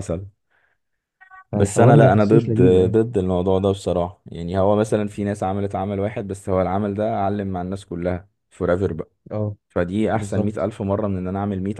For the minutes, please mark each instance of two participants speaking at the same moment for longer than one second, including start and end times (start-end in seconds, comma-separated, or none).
1.5-2.9